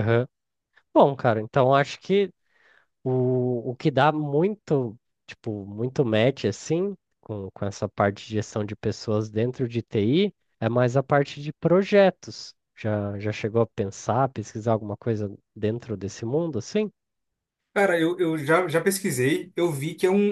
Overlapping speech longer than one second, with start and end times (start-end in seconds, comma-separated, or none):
none